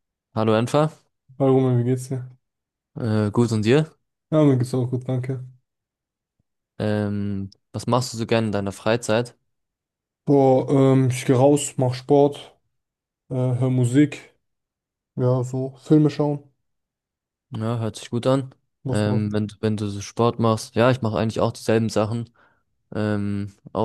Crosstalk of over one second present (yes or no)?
no